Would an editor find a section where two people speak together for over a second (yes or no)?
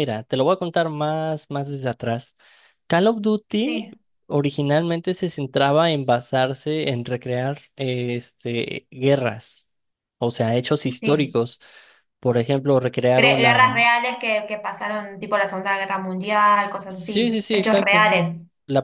yes